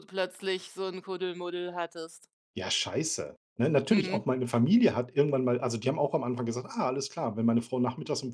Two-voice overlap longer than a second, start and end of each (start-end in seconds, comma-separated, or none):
none